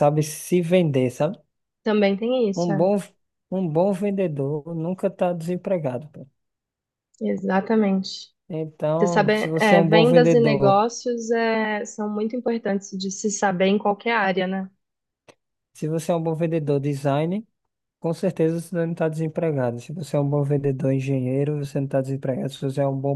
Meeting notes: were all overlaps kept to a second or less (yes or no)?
no